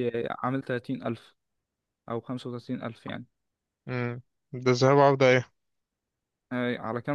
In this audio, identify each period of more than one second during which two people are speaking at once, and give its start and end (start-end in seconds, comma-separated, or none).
none